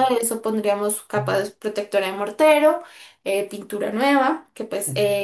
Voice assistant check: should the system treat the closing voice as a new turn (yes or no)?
no